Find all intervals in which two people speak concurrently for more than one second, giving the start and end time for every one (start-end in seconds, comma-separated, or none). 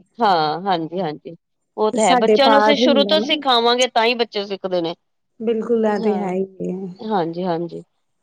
1.9-3.4